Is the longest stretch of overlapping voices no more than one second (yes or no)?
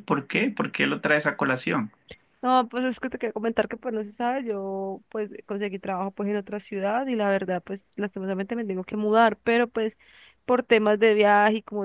yes